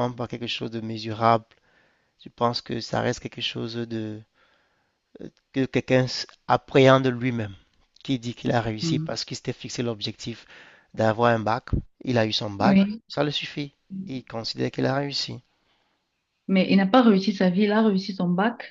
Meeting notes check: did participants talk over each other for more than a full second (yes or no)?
no